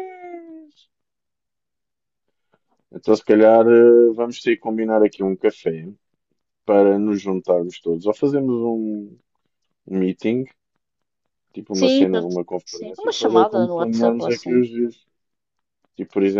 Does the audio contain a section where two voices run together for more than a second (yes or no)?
yes